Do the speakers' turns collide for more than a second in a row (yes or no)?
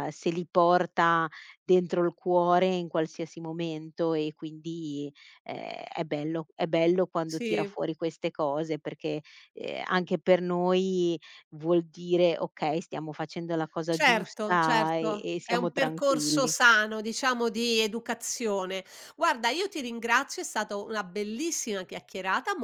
yes